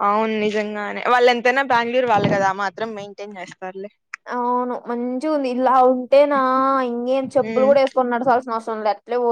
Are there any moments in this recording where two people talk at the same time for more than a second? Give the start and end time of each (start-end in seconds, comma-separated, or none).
none